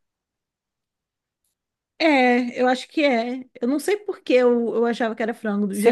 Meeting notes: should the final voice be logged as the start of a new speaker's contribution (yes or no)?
yes